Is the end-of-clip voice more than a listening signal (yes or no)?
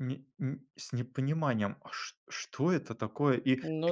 no